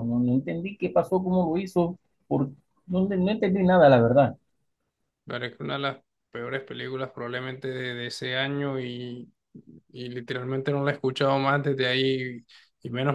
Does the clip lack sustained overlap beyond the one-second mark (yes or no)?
yes